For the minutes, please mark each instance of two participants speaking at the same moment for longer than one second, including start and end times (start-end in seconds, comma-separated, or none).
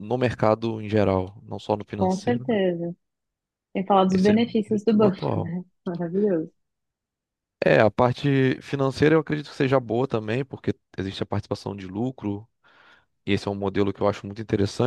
4.1-5.5